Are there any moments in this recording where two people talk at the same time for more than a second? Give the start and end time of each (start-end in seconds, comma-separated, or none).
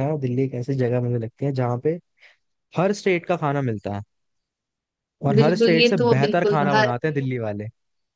5.4-6.9